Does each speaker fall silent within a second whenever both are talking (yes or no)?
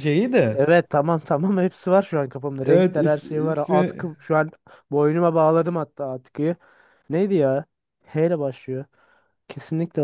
no